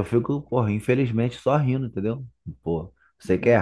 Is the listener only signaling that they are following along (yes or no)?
yes